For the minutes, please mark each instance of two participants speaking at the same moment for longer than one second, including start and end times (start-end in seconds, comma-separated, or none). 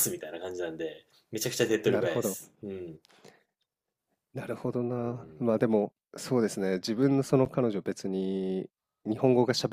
none